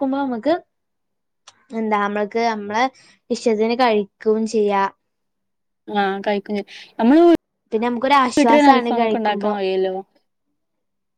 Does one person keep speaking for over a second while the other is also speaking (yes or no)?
yes